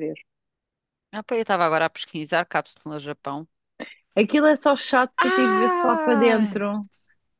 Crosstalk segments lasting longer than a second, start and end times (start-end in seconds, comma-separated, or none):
5.2-6.6